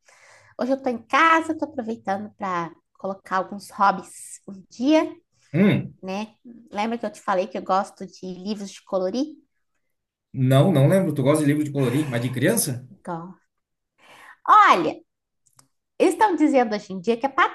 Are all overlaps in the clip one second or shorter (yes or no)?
yes